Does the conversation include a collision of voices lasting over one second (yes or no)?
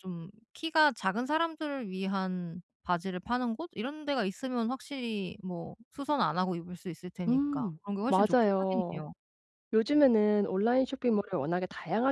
yes